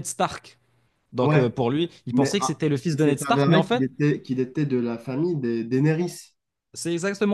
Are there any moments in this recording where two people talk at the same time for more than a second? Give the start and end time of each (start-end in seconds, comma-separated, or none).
2.1-3.8